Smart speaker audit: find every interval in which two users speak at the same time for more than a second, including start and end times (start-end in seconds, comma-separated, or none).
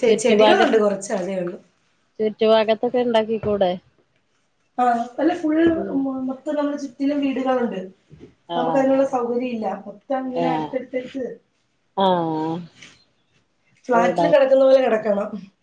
none